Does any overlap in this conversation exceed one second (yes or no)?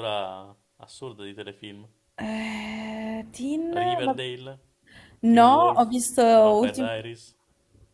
no